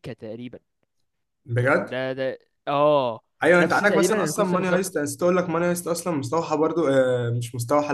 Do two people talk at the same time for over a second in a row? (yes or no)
yes